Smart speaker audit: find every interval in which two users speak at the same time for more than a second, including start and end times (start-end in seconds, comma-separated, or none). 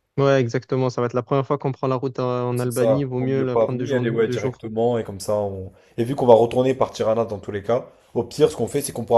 2.5-4.6